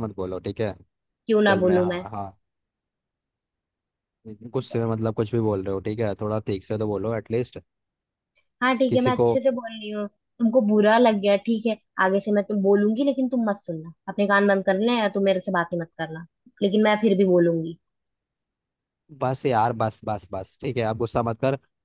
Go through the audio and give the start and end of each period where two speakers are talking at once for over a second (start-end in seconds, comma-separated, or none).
none